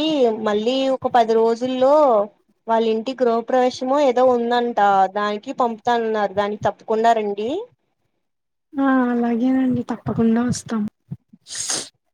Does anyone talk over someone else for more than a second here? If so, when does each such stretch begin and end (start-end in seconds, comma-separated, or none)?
none